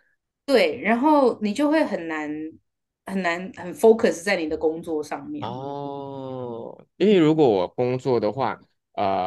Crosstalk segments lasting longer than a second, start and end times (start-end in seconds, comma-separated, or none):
none